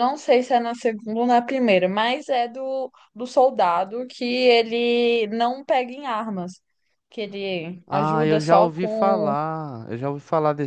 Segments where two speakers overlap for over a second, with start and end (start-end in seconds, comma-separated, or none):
7.9-9.3